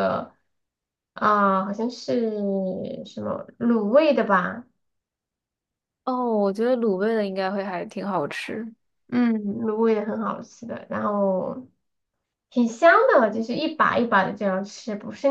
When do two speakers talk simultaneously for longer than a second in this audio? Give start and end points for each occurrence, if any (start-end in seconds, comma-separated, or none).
none